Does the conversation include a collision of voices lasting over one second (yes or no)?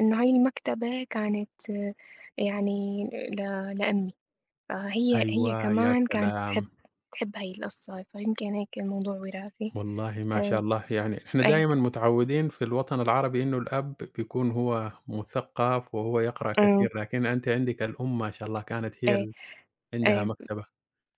yes